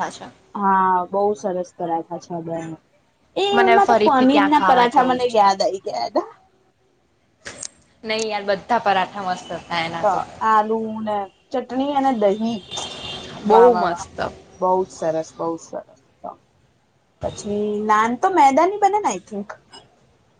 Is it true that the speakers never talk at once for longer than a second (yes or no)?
no